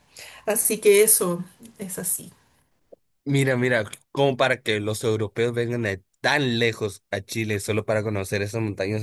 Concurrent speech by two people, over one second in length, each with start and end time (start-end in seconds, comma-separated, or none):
none